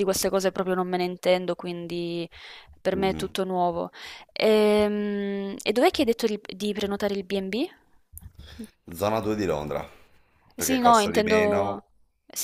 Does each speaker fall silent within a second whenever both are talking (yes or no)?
no